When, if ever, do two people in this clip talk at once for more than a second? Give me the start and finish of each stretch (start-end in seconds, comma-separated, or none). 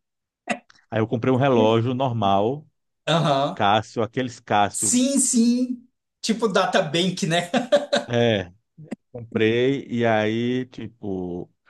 none